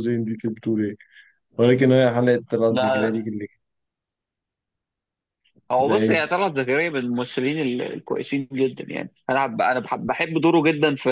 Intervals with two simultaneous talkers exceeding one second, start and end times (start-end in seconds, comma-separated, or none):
none